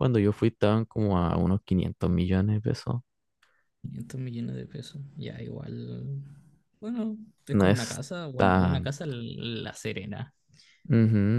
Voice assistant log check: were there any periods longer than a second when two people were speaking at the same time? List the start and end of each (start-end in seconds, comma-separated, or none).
7.5-8.9